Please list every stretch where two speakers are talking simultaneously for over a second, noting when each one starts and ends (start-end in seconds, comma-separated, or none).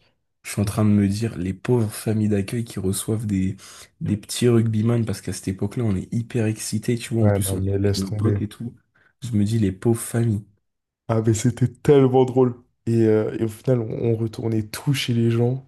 7.2-8.4